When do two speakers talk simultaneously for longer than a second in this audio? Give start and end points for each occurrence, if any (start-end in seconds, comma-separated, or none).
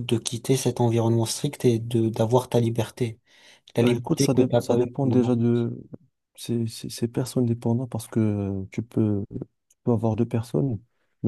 3.8-5.3